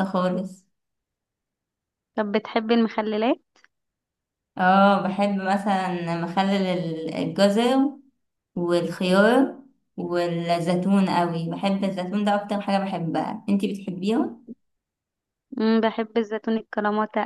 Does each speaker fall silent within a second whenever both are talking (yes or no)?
yes